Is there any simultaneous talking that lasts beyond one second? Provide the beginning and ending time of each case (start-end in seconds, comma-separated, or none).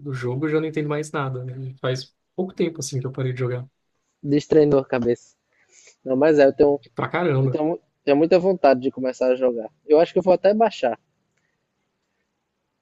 none